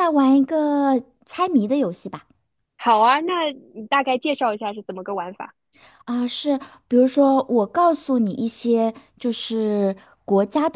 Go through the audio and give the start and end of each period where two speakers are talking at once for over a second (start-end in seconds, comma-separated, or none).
none